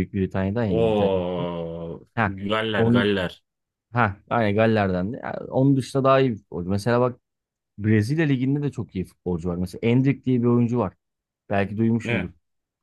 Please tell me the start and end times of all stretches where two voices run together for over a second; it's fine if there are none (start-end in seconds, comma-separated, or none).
none